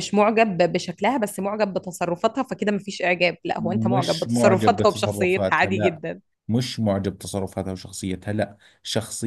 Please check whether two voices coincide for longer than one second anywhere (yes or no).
yes